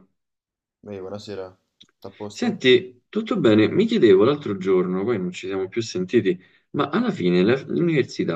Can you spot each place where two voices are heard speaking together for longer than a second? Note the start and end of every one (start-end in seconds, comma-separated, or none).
none